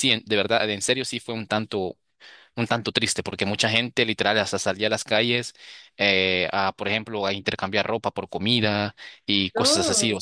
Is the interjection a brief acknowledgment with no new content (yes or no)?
yes